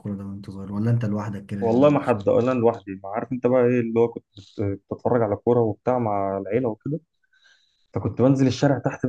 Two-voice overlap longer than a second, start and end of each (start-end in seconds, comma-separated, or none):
none